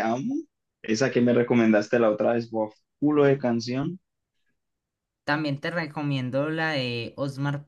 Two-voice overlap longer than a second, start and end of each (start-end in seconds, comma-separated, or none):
none